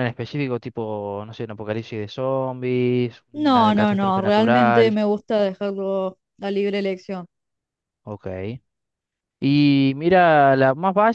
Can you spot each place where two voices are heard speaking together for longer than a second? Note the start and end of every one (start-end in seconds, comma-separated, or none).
3.3-5.0